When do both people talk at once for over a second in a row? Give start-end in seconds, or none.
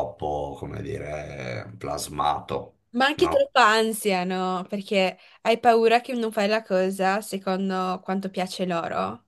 none